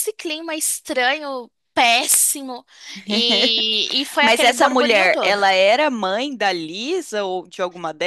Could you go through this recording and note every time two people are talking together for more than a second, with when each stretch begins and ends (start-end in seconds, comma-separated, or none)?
4.2-5.4